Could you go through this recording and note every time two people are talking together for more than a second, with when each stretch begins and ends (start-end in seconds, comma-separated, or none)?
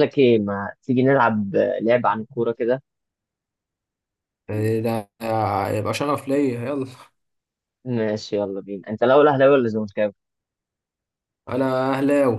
none